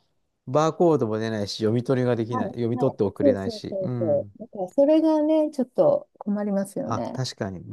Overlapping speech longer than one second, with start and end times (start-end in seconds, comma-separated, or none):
2.3-4.3